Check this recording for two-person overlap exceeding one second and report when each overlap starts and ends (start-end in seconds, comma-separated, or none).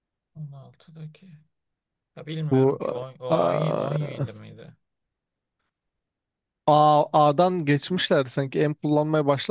none